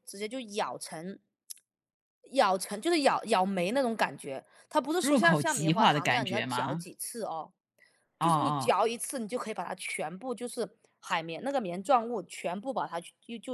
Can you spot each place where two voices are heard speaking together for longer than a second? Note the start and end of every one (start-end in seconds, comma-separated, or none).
5.0-6.9